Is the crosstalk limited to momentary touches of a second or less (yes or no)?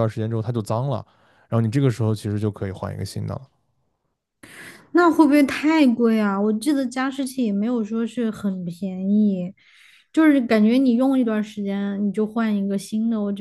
yes